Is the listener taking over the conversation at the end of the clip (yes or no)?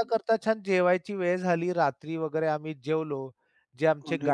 no